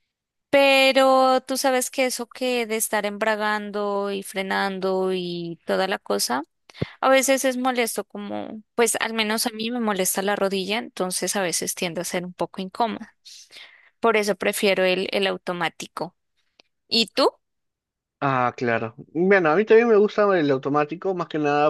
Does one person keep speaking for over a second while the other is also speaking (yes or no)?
no